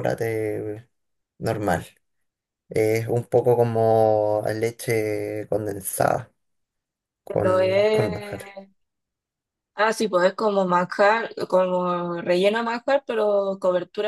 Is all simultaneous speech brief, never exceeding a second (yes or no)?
no